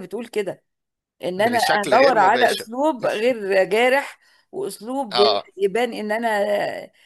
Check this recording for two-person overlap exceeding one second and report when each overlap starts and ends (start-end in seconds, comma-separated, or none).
1.4-2.7